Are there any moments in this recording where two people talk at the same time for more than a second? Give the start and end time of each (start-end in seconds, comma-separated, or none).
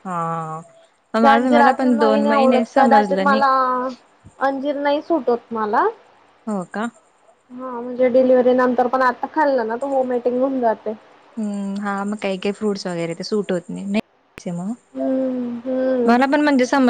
1.2-3.4